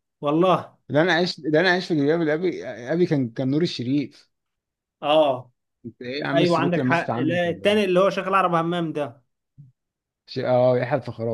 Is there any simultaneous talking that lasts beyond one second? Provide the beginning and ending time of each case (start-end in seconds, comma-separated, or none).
6.3-7.9